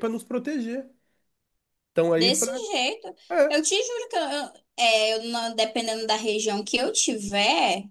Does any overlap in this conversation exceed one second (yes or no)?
no